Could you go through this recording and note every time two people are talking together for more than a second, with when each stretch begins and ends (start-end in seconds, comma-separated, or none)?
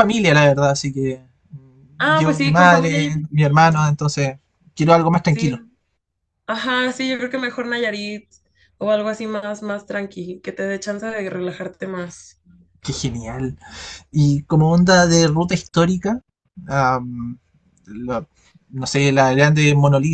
2.0-3.9